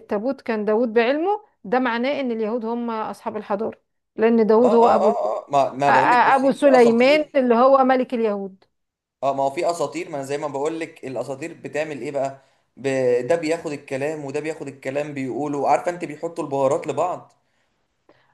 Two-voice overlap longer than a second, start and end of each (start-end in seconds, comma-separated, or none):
5.9-7.4